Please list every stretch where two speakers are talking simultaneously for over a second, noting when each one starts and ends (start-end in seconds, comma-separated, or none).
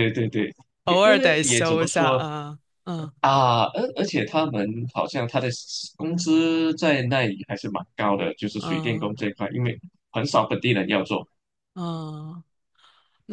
0.9-2.2